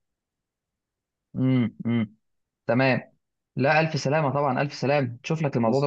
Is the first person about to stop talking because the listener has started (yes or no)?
no